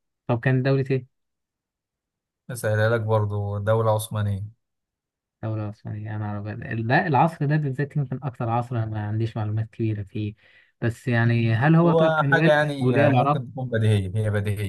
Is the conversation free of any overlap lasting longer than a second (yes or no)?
no